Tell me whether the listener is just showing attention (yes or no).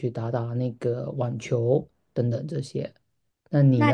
no